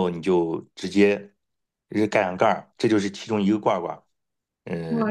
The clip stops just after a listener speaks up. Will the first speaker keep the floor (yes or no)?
no